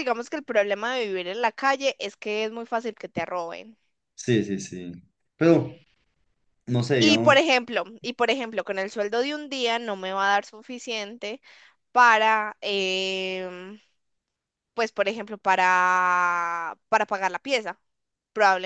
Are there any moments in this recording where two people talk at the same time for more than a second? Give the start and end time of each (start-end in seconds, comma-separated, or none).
none